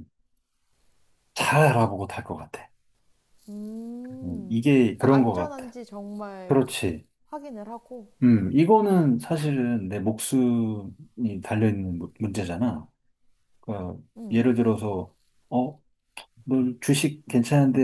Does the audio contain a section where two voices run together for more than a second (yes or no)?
yes